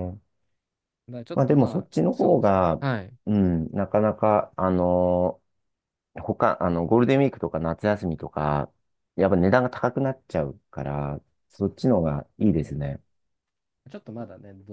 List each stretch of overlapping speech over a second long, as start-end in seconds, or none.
1.3-2.8